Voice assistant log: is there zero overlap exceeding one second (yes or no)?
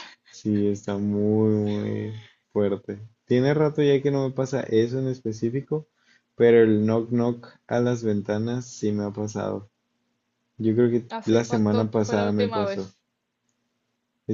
no